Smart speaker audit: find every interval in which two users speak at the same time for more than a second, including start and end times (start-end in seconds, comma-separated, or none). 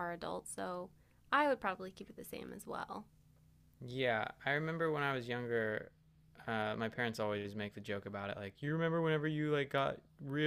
none